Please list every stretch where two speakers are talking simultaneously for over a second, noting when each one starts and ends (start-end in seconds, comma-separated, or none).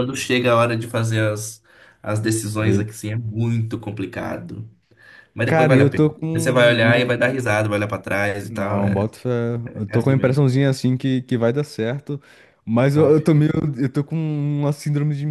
5.5-7.2